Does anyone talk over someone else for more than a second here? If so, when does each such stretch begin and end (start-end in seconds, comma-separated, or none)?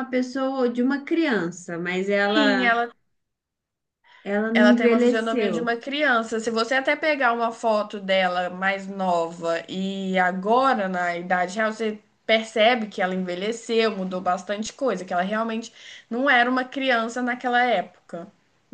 4.5-5.8